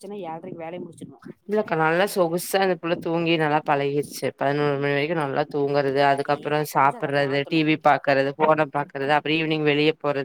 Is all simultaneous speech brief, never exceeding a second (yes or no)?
no